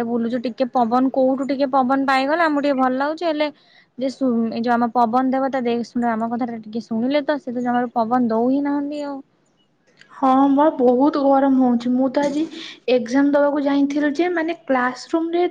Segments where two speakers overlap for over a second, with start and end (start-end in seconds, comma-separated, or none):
none